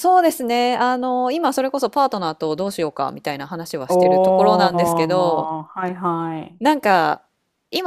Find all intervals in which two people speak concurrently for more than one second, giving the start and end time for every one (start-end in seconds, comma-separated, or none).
3.9-5.5